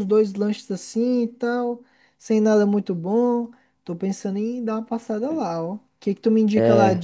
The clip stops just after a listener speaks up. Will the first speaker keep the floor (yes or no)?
yes